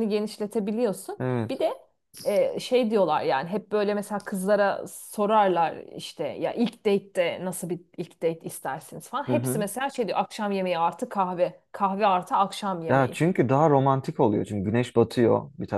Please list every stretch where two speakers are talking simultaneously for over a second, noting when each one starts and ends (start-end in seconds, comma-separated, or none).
none